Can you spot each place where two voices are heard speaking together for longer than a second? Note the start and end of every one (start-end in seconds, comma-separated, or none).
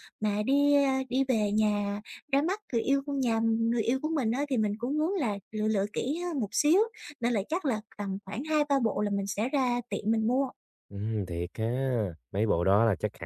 none